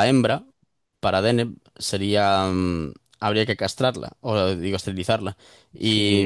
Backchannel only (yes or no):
yes